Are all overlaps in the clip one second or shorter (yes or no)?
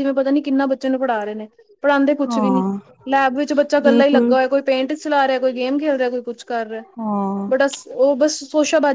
yes